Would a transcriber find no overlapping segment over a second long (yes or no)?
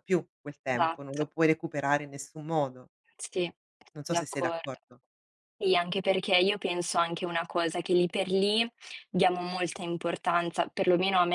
yes